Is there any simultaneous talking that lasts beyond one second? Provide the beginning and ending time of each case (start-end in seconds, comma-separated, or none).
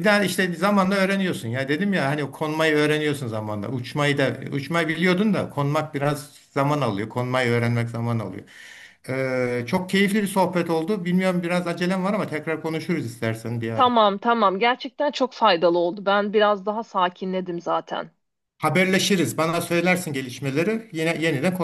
none